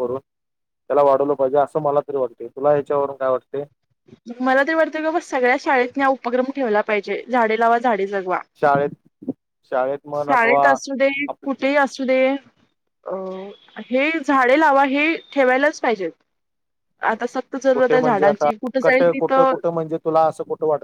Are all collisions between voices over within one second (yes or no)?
no